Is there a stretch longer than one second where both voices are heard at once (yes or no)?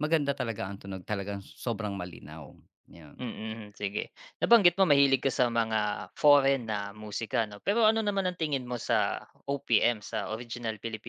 no